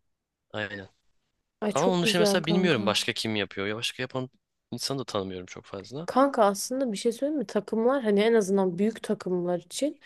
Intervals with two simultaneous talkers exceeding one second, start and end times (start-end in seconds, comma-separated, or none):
1.7-3.0